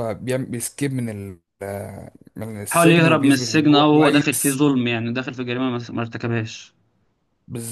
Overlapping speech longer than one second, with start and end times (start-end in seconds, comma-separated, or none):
2.7-4.6